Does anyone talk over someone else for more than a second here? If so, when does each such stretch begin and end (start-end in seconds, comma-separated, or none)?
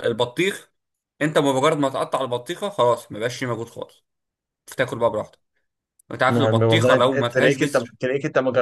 6.3-7.9